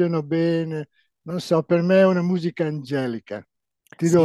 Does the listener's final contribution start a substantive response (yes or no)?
yes